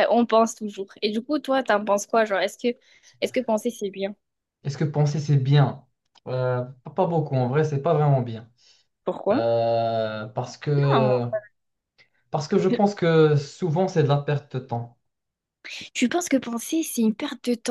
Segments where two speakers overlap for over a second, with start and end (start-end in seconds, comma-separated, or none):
none